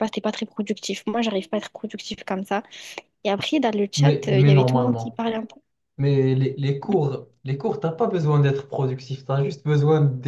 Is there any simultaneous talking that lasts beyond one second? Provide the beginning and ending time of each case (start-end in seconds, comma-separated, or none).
3.9-5.2